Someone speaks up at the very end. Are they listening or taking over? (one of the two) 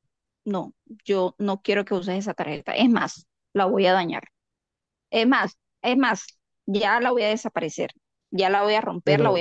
listening